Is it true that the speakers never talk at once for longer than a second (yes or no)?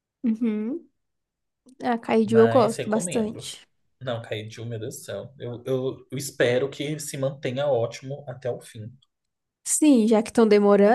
no